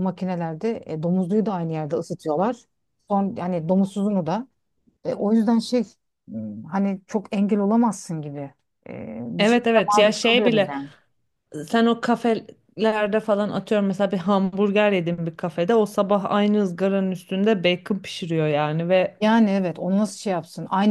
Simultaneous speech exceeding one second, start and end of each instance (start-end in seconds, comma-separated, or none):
9.4-10.7